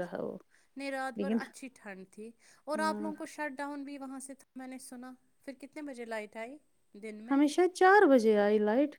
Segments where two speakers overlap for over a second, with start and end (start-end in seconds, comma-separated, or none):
none